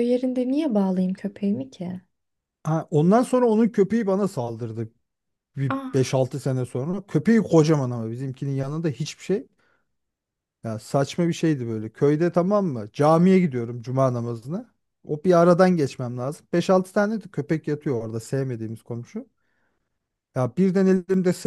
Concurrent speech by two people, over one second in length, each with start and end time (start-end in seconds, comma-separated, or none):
none